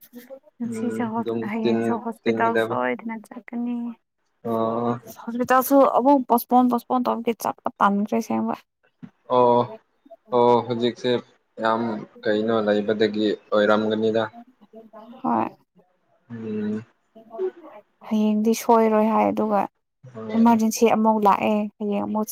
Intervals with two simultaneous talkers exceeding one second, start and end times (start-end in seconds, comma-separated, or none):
0.8-2.8